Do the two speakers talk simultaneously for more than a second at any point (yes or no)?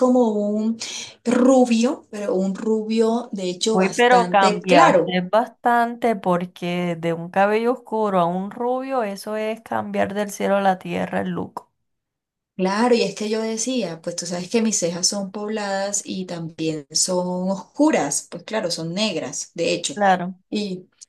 yes